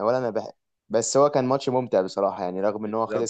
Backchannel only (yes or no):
no